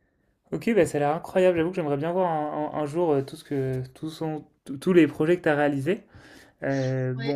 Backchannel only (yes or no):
yes